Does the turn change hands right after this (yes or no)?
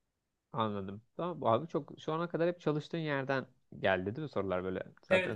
yes